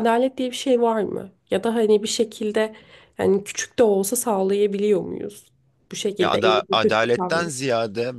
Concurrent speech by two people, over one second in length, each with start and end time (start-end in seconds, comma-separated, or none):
6.2-7.5